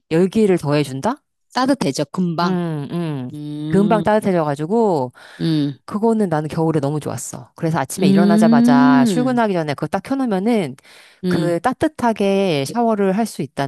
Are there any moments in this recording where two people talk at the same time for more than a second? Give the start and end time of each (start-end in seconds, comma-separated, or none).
8.0-9.4